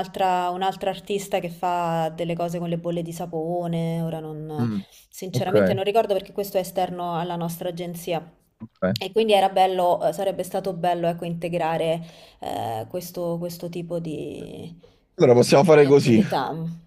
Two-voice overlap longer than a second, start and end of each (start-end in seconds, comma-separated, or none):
none